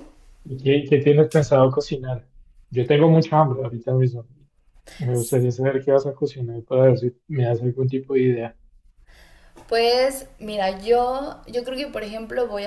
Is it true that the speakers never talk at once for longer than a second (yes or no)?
yes